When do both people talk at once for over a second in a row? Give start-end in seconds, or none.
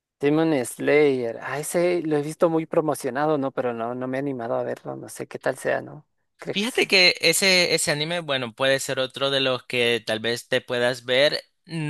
none